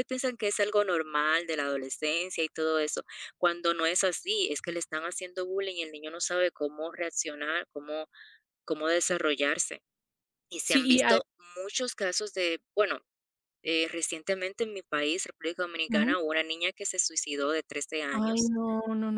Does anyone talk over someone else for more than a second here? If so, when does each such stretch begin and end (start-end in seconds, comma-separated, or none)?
none